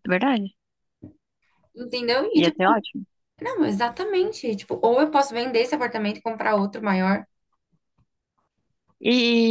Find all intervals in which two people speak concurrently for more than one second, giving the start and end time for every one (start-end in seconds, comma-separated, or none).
none